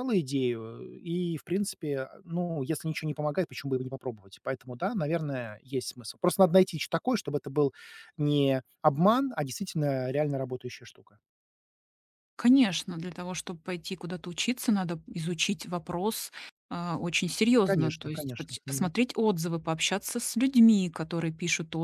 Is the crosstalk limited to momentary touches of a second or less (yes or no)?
no